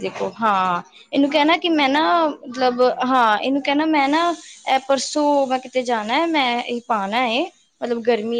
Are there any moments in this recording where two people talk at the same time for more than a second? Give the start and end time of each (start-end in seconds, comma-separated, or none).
1.3-3.0